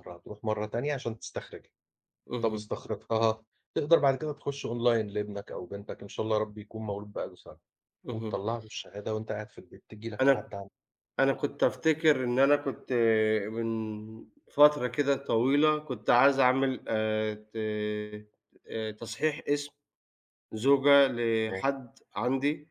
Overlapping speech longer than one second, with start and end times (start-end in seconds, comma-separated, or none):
none